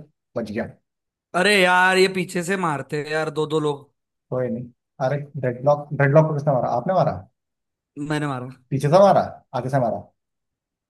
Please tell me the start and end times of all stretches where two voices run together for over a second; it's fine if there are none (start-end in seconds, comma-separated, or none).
none